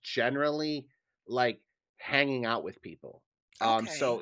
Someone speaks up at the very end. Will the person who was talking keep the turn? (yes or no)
yes